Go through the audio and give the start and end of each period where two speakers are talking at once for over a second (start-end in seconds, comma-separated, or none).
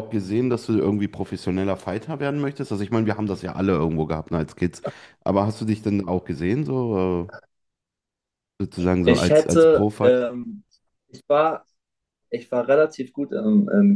9.0-10.3